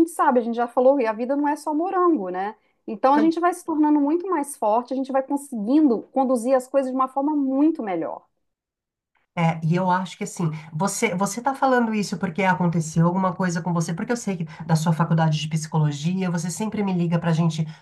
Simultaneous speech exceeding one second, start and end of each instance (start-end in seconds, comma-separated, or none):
none